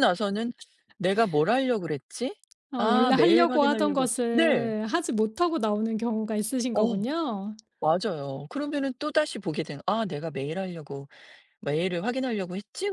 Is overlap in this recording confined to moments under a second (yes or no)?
no